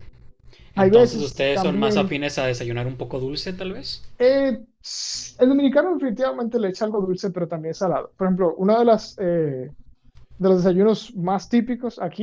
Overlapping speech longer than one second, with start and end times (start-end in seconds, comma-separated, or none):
0.8-2.1